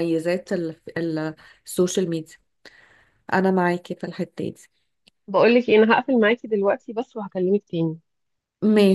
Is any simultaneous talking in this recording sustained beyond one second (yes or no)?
no